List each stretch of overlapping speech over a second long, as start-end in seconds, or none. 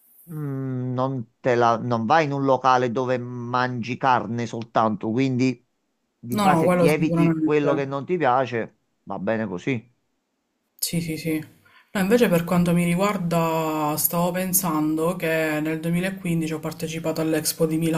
6.3-7.7